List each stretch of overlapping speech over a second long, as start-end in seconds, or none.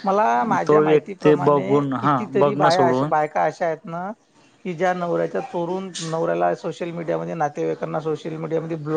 1.4-3.1